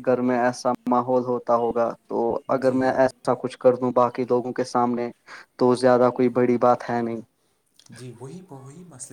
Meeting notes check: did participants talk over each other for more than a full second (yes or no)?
no